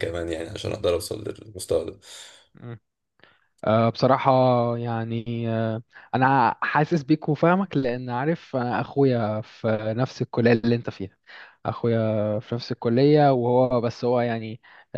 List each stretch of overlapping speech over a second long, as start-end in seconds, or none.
none